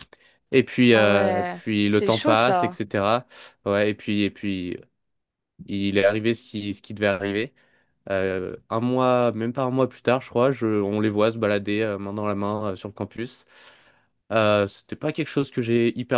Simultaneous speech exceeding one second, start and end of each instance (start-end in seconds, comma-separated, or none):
0.9-2.8